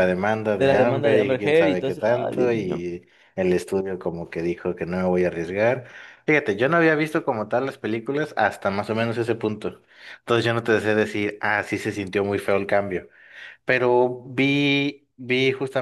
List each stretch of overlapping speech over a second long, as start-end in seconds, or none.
0.6-2.9